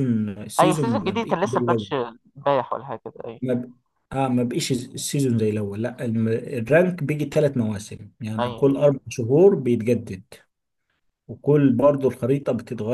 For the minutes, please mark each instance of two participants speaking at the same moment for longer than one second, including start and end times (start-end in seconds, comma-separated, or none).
0.6-1.9